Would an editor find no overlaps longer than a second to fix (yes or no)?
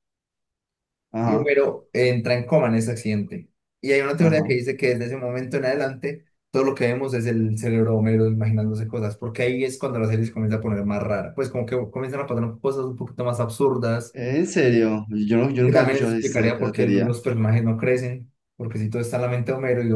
no